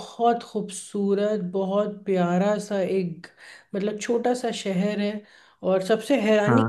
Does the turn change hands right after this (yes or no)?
no